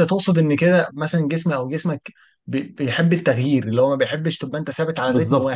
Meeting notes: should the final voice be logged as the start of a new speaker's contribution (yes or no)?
yes